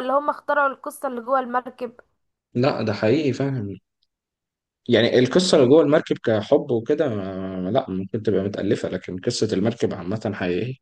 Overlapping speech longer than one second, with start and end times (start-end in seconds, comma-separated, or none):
none